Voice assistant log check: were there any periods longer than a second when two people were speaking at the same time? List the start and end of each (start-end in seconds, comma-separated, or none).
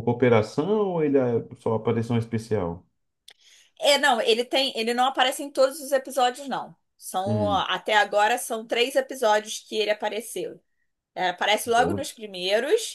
none